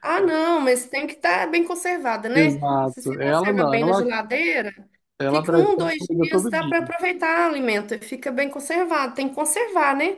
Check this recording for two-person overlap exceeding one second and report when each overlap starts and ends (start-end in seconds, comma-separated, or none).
2.3-4.1, 5.3-6.7